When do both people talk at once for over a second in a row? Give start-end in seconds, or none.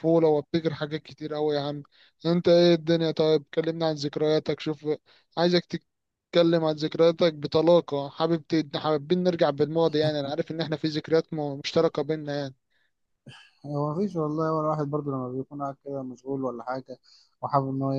none